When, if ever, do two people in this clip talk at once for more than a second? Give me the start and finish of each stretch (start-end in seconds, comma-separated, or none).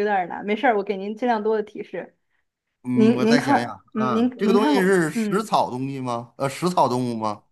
2.9-5.6